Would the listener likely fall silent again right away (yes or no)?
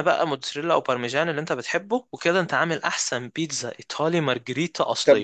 no